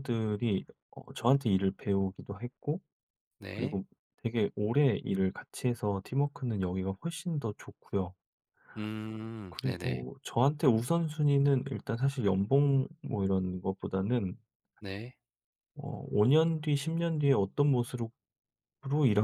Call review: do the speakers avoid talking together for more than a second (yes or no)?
yes